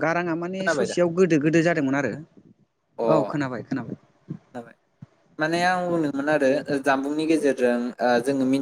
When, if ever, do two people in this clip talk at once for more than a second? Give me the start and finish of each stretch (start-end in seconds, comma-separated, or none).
none